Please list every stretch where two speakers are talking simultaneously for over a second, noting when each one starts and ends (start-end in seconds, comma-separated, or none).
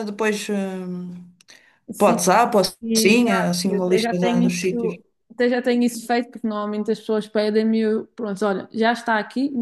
2.8-5.0